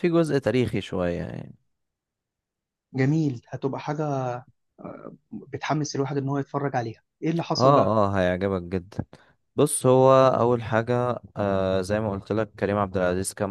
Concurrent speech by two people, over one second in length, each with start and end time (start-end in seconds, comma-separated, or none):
none